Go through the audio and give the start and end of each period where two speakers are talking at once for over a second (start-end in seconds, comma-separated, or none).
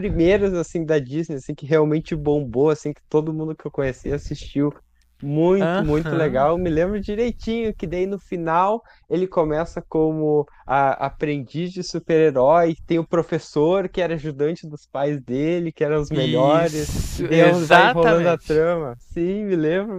16.1-18.7